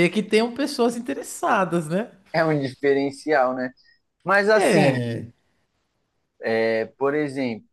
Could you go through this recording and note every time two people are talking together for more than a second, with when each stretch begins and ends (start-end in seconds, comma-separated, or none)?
none